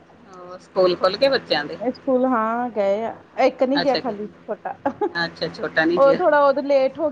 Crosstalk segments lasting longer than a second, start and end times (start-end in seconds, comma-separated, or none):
none